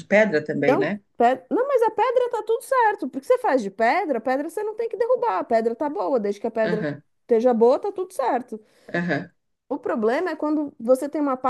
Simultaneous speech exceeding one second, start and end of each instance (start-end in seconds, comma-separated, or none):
none